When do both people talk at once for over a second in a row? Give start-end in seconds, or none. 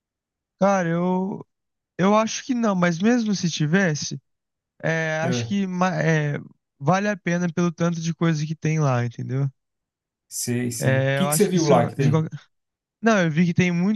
10.8-12.2